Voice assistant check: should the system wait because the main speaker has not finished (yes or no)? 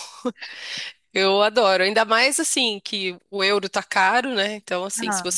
yes